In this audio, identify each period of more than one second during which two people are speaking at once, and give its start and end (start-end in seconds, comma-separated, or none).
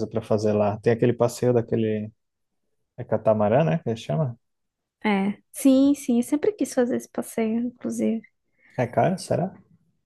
none